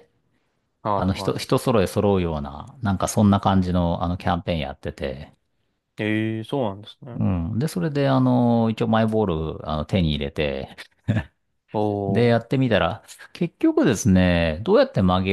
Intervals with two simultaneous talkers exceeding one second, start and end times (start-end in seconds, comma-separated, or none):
none